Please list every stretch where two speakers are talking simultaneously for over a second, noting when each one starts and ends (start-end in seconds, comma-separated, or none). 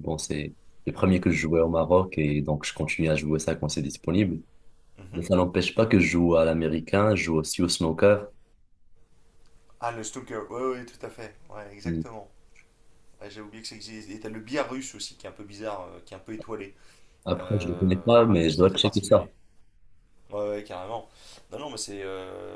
17.4-19.3